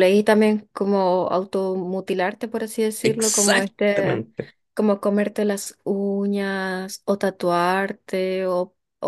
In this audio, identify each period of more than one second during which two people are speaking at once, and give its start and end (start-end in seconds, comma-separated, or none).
3.0-4.2